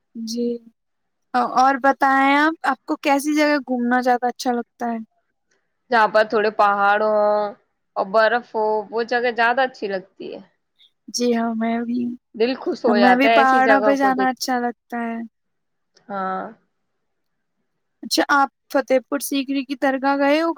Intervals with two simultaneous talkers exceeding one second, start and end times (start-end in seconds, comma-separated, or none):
12.9-14.4